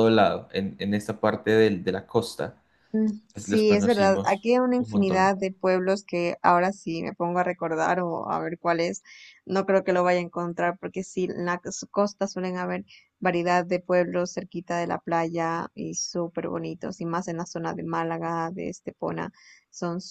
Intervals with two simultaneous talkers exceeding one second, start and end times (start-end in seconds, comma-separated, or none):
3.3-5.3